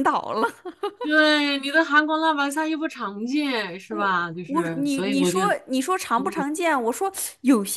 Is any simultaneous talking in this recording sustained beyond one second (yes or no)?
yes